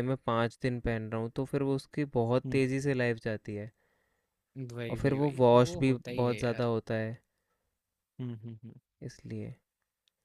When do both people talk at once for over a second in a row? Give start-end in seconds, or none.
4.9-6.7